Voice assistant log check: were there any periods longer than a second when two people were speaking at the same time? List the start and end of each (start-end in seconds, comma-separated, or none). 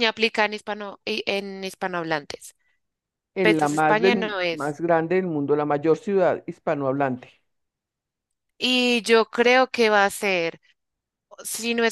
3.4-4.8